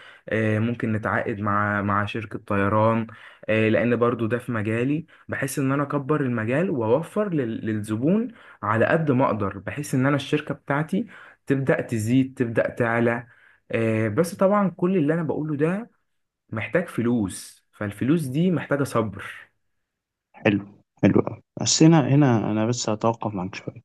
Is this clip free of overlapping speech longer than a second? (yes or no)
yes